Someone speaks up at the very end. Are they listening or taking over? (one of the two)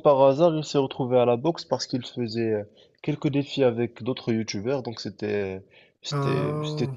listening